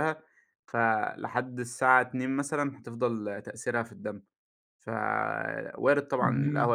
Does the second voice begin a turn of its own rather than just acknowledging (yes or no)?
no